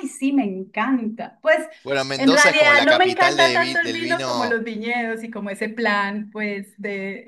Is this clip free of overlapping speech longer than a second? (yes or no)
no